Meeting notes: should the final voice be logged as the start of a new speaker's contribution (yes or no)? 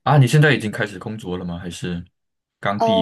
yes